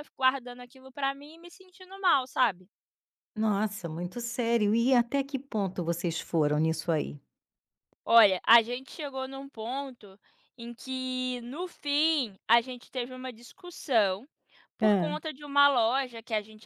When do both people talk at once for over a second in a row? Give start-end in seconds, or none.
none